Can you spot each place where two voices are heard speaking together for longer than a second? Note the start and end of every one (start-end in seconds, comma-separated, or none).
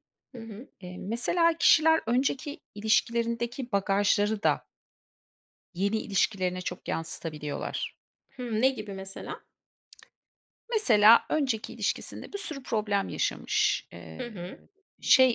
none